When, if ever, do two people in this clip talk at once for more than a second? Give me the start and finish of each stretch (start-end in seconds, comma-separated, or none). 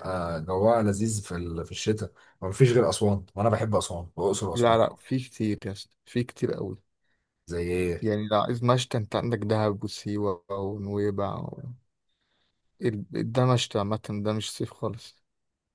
none